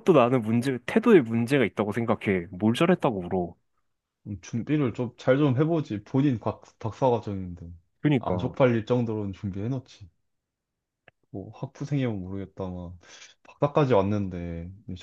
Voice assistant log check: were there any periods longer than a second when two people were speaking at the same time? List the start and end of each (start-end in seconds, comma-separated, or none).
none